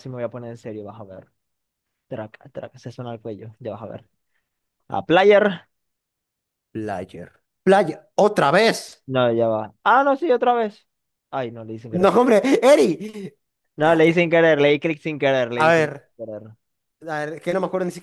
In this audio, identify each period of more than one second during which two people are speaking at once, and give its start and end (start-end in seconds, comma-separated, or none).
none